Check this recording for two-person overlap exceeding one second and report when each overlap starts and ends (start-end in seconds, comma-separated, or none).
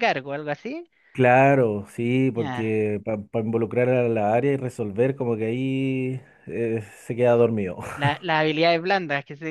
none